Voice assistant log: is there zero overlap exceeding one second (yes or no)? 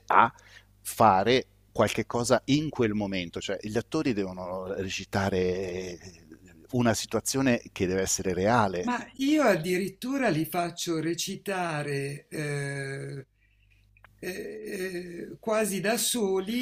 yes